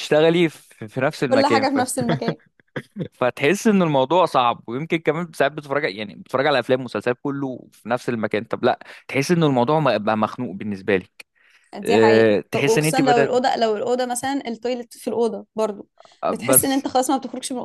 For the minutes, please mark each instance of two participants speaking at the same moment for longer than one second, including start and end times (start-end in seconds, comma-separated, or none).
11.8-13.3